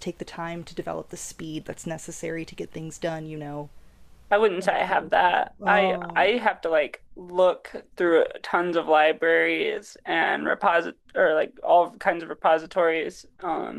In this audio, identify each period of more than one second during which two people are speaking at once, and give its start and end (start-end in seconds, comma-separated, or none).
4.6-6.3